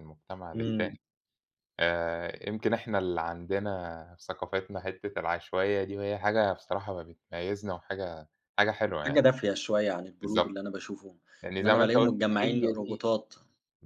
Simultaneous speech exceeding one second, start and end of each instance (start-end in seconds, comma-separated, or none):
11.6-13.0